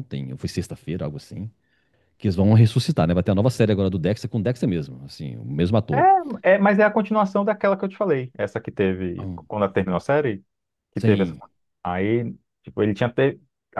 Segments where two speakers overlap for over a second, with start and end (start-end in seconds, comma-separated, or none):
none